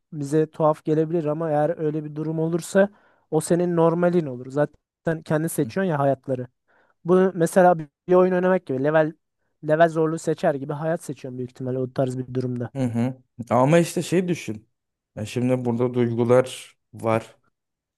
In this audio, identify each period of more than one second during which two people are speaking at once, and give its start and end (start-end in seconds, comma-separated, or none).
none